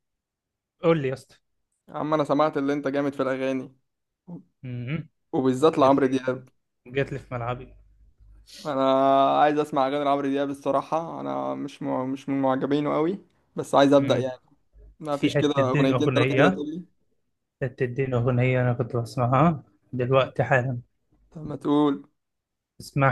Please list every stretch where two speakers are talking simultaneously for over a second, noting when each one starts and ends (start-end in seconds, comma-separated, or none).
15.1-16.6